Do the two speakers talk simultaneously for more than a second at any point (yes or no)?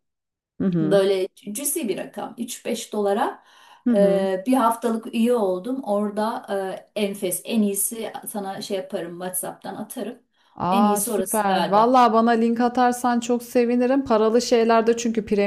yes